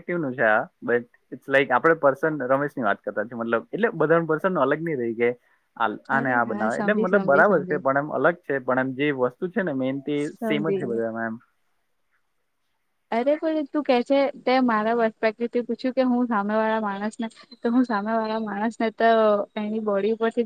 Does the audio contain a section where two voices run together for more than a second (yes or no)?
yes